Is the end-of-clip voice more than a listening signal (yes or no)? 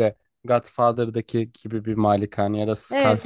yes